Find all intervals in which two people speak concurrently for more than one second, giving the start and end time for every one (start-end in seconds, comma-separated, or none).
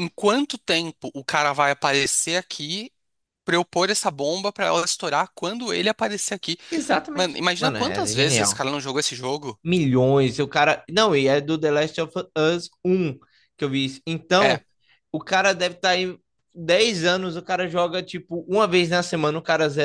7.1-8.6